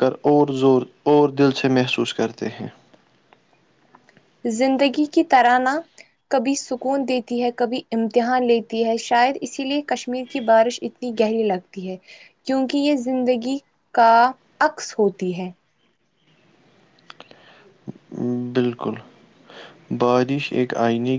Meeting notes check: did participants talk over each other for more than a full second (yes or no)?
no